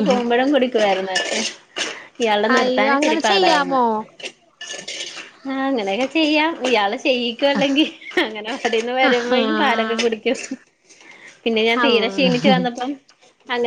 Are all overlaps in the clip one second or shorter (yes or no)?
no